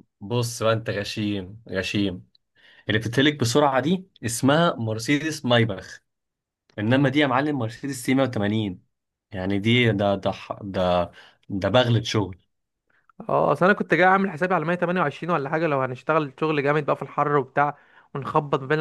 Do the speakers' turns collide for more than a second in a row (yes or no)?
no